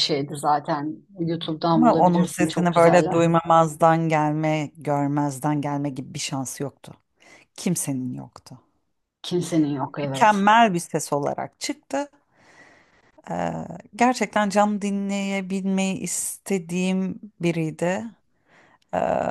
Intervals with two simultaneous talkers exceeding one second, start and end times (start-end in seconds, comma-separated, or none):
1.7-3.2